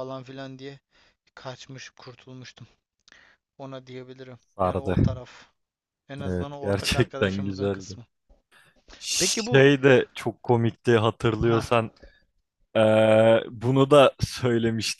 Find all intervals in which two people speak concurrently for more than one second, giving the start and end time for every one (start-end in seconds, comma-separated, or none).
6.2-8.0